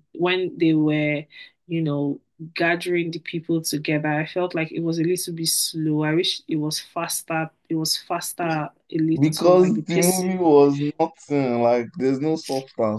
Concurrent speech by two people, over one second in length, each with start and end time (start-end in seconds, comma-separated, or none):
9.2-10.4